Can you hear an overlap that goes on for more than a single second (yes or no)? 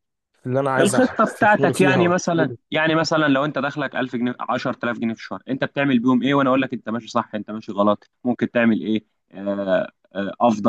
yes